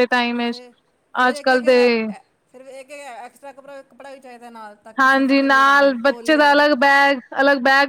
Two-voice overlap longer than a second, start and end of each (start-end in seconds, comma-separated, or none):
5.0-6.5